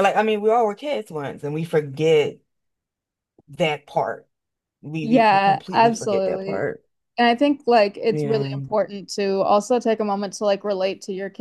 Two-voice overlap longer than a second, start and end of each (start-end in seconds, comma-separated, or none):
5.0-6.7